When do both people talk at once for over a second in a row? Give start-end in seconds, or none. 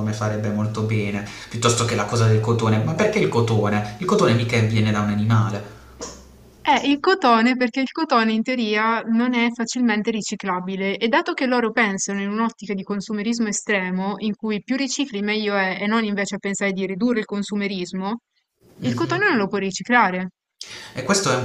none